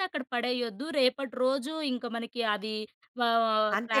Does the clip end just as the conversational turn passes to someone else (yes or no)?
no